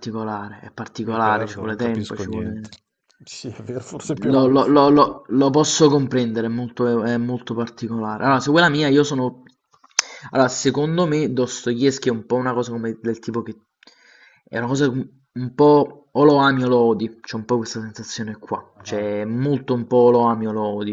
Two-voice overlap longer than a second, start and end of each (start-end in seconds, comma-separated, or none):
1.0-2.7